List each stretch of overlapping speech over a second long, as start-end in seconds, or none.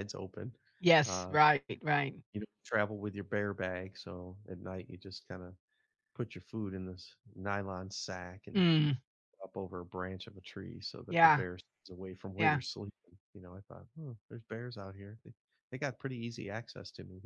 none